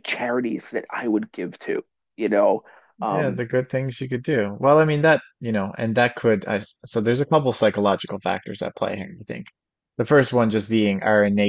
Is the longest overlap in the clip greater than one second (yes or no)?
no